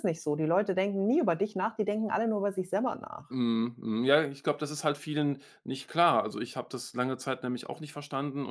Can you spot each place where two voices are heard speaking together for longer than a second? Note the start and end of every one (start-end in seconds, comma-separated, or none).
none